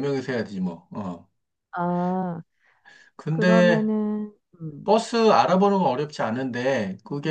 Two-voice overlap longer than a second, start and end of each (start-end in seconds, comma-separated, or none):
none